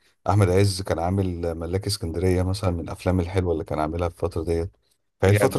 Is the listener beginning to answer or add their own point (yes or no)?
no